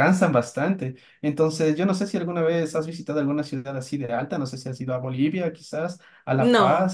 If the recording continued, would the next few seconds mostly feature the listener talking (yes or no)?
yes